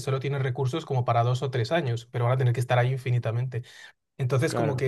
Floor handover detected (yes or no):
no